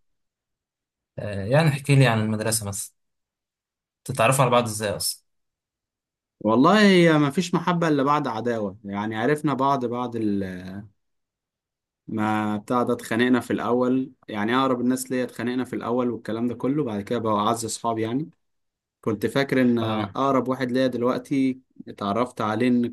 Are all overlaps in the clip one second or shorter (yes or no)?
yes